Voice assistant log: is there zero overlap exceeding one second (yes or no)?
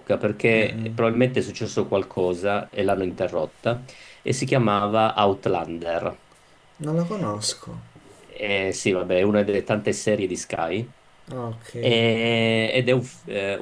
yes